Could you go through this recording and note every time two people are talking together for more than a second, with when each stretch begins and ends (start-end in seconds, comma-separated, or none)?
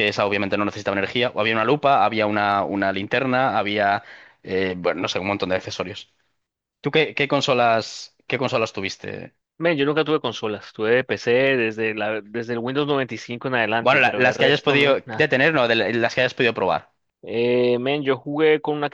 13.8-15.3